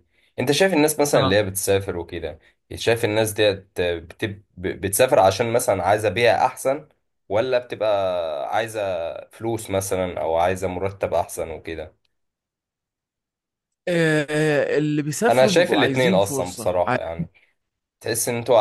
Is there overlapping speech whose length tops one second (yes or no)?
yes